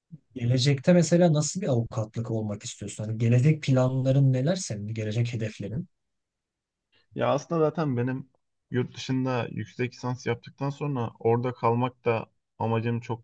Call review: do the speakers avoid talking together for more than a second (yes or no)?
yes